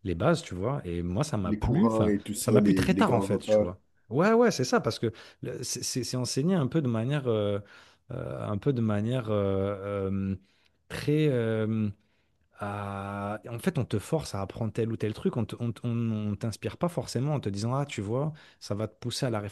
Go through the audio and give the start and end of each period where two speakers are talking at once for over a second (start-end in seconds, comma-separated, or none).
1.4-3.7